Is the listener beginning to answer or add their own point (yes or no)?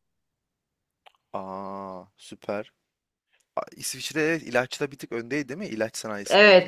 yes